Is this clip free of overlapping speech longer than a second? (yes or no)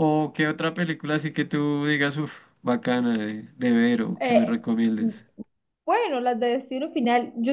yes